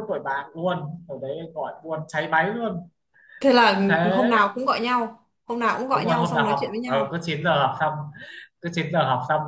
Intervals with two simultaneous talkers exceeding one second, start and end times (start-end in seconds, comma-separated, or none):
5.9-7.2